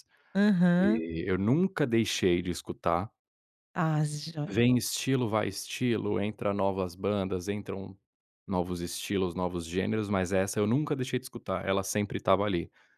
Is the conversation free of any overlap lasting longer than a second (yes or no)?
yes